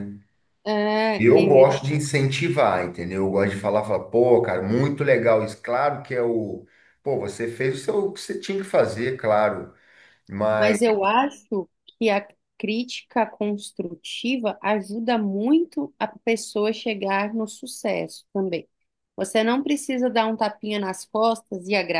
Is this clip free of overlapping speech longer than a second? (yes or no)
yes